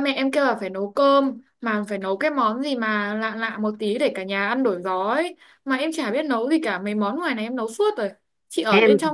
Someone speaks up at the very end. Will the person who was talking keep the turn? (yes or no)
yes